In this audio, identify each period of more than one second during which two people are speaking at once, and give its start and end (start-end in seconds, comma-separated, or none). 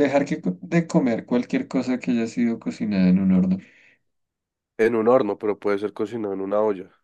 none